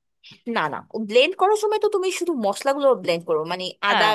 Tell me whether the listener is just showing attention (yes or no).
yes